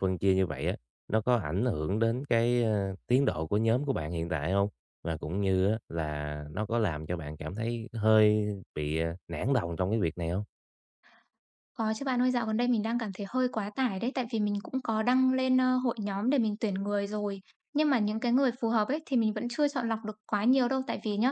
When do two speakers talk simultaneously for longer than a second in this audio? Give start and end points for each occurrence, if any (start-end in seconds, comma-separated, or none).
none